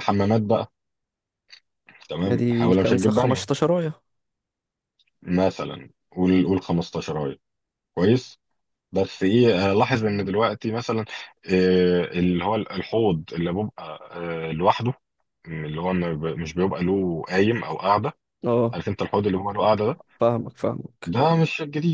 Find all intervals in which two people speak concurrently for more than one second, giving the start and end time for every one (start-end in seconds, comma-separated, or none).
2.3-3.5